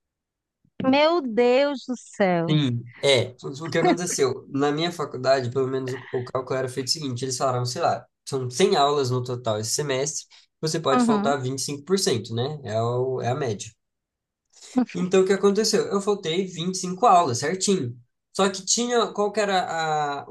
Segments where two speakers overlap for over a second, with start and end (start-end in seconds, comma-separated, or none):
none